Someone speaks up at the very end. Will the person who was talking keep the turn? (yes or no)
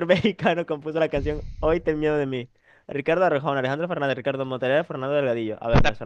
no